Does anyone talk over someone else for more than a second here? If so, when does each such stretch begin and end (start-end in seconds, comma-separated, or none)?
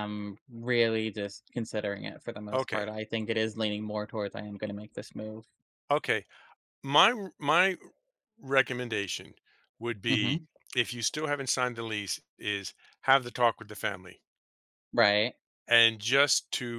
none